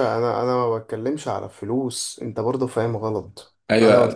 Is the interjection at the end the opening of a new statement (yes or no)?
yes